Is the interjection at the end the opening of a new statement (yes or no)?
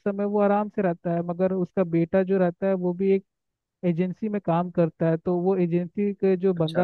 no